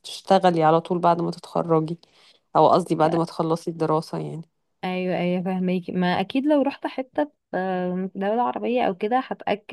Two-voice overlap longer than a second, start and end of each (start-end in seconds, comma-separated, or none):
none